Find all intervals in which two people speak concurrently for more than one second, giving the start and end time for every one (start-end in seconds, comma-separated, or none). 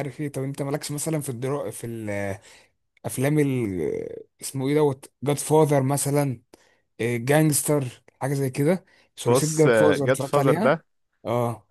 9.2-10.8